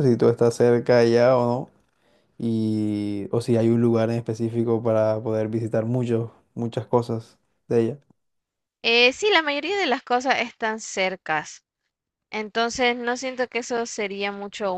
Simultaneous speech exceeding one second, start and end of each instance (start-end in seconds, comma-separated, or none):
none